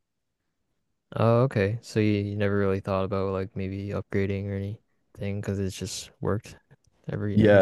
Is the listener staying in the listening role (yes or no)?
no